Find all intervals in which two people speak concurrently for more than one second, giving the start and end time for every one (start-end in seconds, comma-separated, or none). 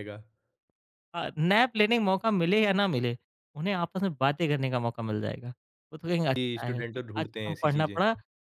6.3-8.0